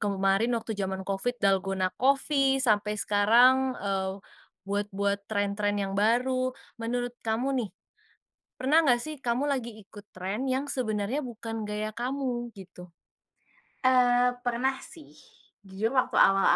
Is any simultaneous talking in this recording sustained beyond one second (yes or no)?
no